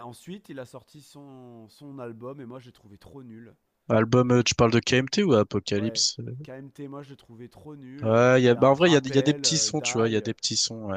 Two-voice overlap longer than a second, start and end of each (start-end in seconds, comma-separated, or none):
8.0-10.3